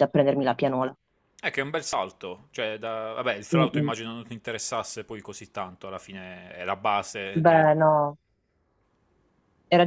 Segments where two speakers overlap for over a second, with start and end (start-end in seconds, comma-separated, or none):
none